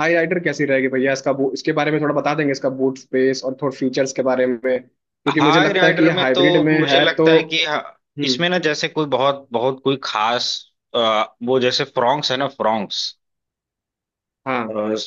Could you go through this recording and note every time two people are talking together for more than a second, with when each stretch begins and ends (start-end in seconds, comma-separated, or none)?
5.3-7.3